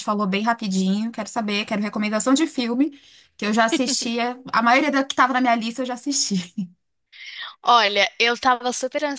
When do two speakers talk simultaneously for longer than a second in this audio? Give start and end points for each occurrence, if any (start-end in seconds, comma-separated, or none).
none